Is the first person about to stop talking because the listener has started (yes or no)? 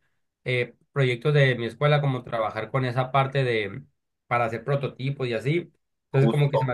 no